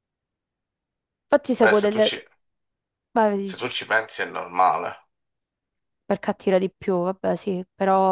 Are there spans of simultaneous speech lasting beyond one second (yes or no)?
no